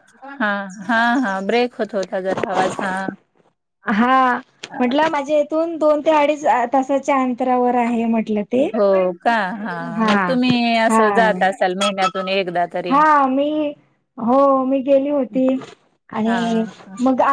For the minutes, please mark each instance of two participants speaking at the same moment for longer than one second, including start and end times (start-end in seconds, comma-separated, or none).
none